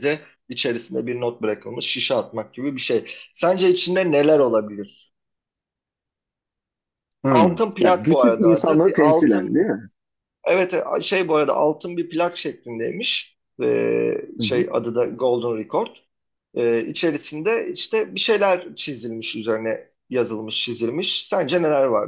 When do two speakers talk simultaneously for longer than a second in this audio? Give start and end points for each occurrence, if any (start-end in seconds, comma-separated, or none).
7.3-9.6